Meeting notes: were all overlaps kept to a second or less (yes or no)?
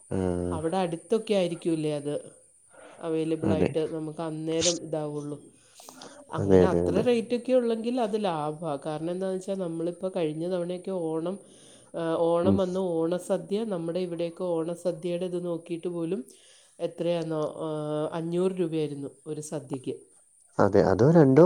yes